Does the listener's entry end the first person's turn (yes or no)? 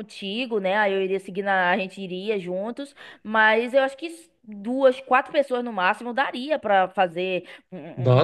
no